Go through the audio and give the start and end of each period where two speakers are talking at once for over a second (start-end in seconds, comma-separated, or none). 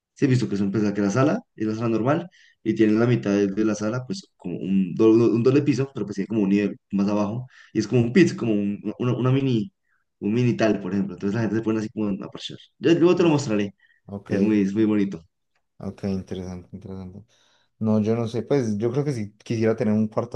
none